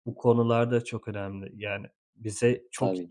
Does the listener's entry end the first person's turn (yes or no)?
no